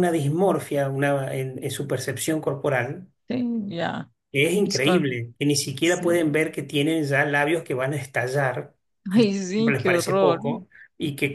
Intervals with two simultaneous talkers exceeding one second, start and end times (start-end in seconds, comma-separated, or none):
9.1-10.4